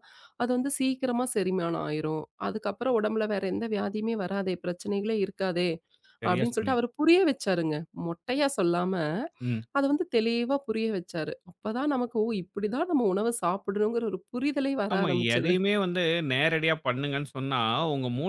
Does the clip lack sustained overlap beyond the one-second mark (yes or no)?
yes